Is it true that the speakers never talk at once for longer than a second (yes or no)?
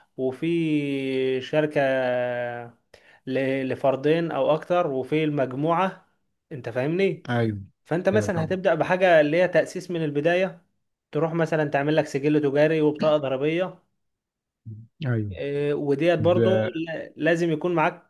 yes